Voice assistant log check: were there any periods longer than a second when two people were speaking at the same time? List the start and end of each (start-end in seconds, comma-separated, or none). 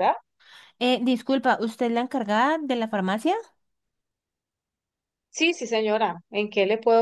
none